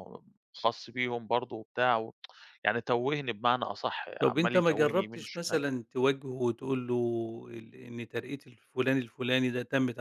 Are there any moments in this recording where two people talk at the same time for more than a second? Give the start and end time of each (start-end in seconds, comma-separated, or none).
4.2-5.6